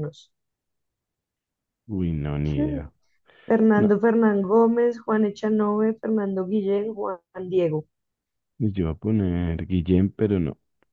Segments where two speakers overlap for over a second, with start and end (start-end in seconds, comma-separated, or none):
none